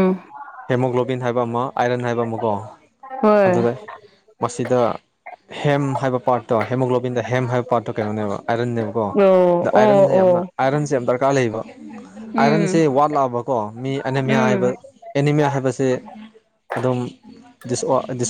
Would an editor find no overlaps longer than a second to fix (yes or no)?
no